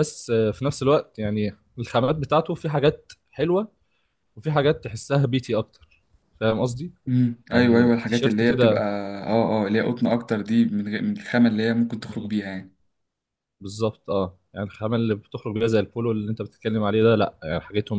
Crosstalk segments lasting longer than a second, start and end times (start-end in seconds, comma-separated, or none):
7.5-8.8